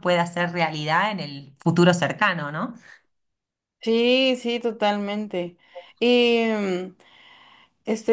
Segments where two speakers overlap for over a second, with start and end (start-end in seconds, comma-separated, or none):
none